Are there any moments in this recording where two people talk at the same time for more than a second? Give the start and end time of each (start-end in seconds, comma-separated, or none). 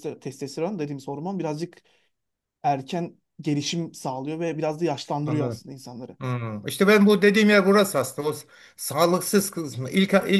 none